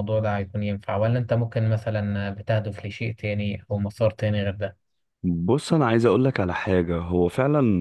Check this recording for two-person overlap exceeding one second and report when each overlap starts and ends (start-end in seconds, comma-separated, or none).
none